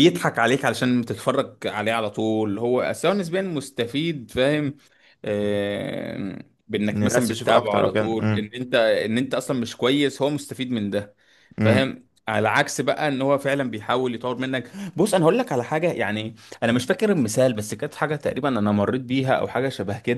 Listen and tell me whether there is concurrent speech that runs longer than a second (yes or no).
yes